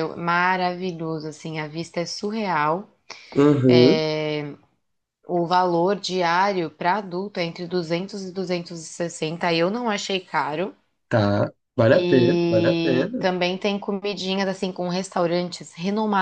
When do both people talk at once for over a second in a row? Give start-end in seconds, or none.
11.9-13.3